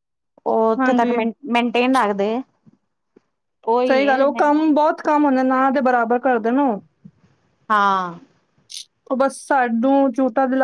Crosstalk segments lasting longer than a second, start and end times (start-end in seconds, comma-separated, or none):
none